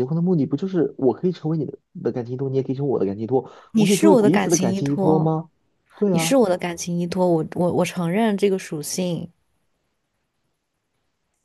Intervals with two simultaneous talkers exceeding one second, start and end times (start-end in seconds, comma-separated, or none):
3.7-5.3